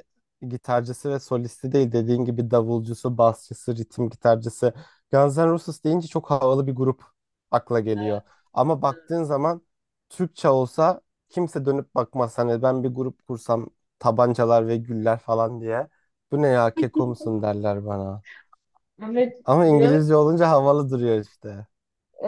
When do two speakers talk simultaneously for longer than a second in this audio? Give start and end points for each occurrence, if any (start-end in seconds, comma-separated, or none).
none